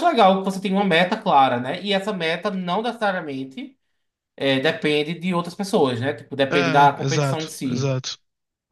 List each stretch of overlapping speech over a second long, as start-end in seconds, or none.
6.5-7.9